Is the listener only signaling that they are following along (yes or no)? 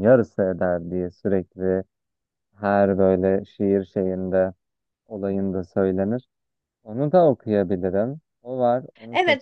no